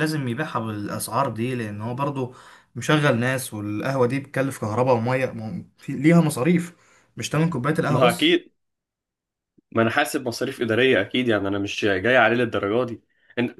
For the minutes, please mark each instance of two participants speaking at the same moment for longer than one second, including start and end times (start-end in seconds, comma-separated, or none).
none